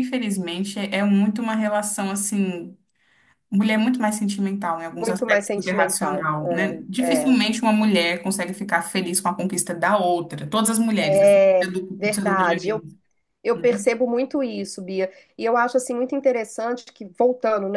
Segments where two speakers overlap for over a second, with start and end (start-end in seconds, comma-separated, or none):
5.0-6.2, 11.0-12.8